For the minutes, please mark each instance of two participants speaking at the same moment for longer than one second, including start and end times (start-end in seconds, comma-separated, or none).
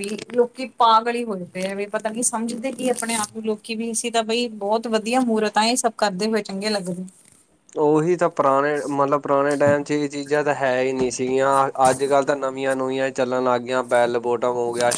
none